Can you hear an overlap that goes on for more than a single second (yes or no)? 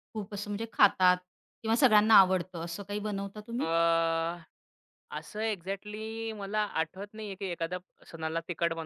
no